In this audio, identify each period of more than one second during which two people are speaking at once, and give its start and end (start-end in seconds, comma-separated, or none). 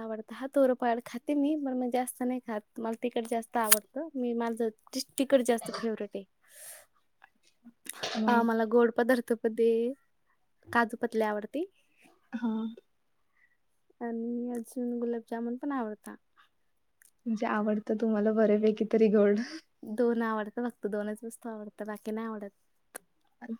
none